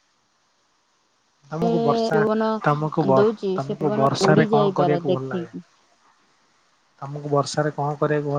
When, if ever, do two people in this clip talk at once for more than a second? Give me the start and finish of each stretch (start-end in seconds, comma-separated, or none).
3.6-5.5